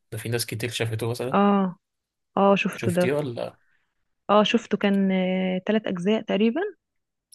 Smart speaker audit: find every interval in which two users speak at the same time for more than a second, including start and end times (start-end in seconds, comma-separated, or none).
none